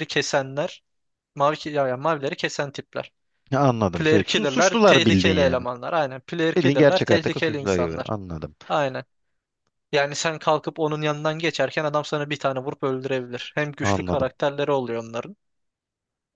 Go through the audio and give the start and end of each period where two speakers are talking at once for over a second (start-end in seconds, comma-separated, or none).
3.9-5.7, 6.5-8.1